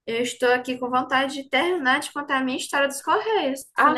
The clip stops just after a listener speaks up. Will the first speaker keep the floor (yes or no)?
no